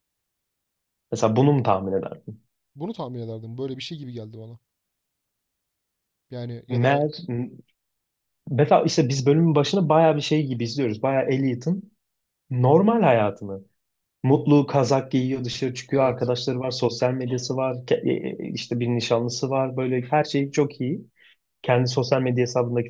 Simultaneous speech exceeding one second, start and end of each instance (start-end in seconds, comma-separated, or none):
none